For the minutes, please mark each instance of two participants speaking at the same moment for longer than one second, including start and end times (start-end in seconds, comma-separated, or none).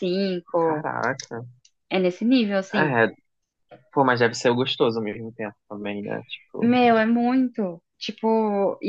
none